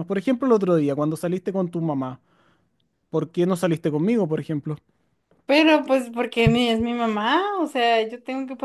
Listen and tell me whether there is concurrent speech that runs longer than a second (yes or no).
no